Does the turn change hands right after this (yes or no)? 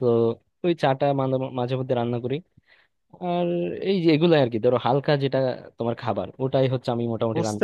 yes